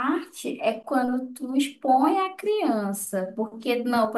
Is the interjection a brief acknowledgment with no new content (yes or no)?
yes